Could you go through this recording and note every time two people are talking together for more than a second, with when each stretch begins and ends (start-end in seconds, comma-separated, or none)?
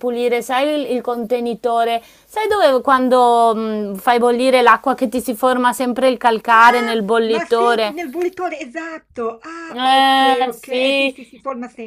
6.5-8.0, 9.7-11.1